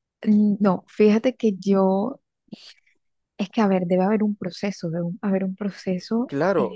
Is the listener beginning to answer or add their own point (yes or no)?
yes